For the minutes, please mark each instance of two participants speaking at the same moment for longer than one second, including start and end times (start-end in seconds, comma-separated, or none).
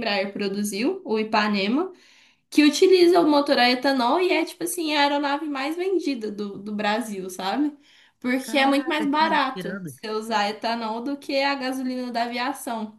8.4-9.9